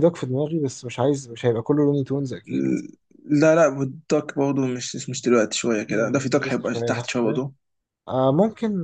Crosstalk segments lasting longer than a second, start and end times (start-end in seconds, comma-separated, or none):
5.9-7.4